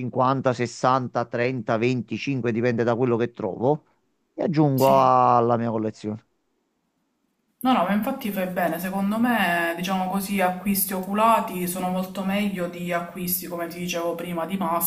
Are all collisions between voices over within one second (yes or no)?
yes